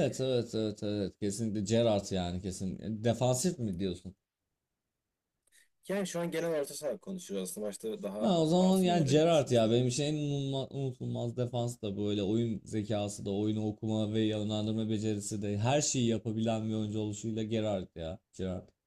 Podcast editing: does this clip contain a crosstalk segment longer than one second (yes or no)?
yes